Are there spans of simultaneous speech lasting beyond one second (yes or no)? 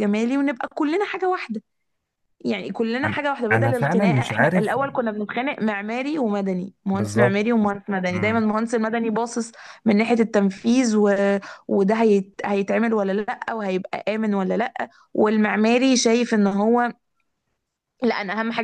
yes